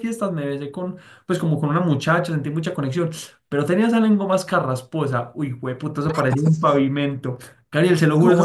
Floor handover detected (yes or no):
no